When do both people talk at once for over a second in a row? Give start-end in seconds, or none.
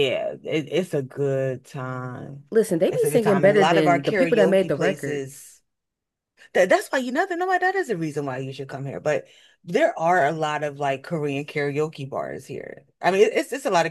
2.9-5.2